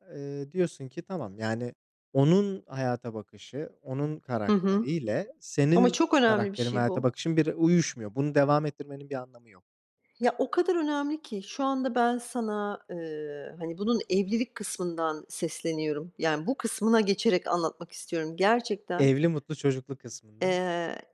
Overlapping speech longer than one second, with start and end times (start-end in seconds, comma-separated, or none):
5.7-7.2